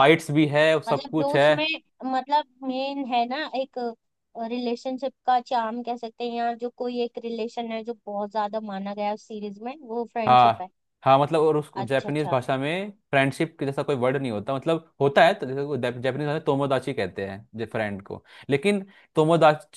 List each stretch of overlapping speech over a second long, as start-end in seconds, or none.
none